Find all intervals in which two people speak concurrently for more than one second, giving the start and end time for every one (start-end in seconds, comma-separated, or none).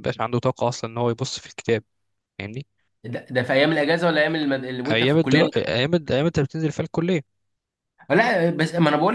none